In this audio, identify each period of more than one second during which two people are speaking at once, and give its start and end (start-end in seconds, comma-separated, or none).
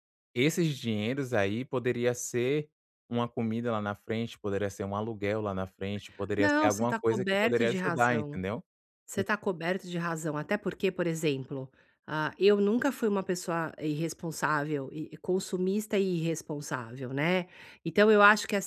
6.4-8.4